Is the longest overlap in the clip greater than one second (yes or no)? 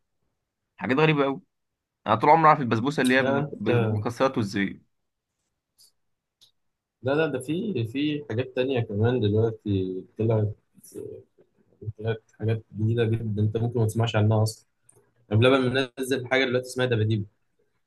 no